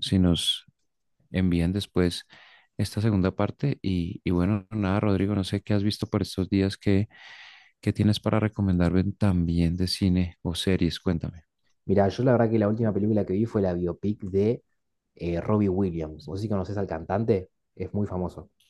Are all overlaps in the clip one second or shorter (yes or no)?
yes